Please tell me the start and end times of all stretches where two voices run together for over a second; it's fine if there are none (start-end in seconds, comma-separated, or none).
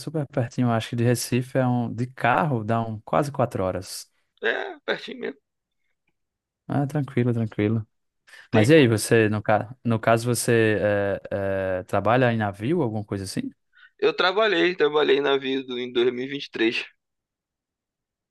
none